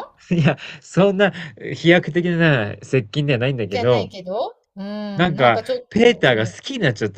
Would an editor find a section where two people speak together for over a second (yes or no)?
yes